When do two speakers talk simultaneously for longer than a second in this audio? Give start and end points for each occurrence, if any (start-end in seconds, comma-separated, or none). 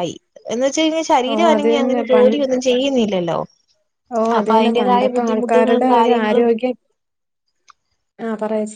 4.4-6.5